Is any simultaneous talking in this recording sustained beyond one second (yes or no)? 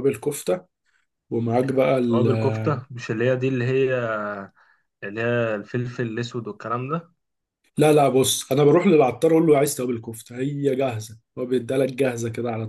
no